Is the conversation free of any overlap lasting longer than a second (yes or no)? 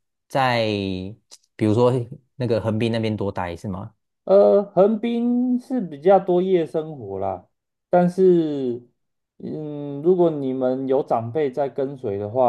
yes